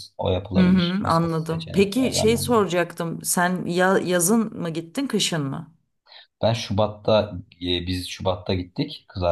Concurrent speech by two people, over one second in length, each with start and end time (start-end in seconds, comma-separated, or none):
0.6-2.5